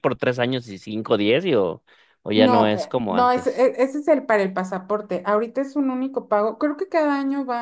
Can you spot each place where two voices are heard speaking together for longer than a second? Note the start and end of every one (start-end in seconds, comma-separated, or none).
2.3-3.7